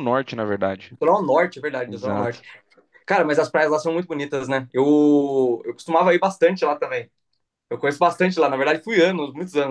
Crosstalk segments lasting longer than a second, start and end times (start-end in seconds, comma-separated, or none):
none